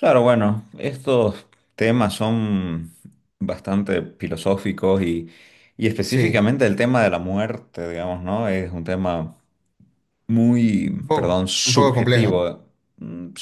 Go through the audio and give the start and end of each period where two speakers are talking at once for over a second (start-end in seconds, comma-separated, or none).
10.8-12.3